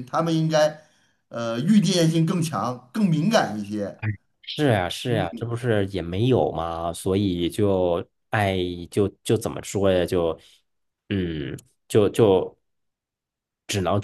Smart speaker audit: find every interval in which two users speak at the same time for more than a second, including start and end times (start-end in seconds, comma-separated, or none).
none